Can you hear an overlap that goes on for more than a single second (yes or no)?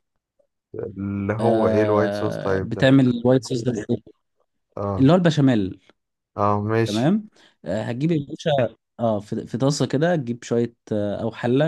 yes